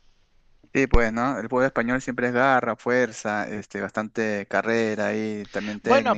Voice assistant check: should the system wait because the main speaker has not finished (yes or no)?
no